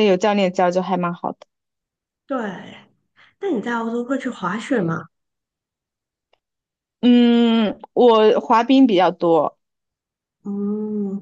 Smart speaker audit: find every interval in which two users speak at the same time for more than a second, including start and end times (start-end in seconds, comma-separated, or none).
none